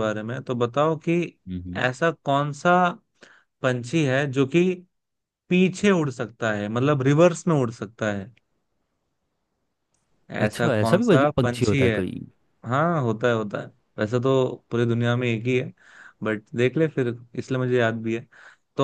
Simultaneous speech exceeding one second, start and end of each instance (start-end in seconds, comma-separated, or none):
10.4-12.0